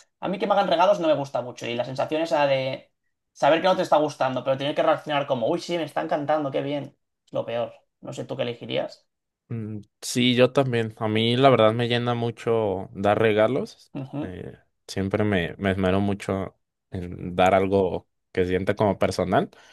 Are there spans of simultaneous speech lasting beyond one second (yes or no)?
no